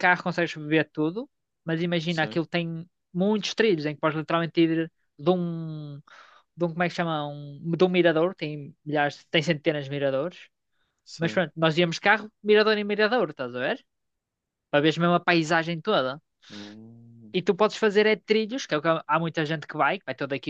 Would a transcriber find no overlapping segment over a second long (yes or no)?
yes